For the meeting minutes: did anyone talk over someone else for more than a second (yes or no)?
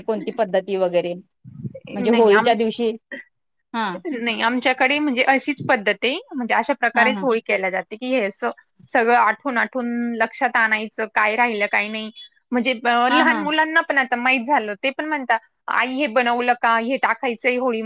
no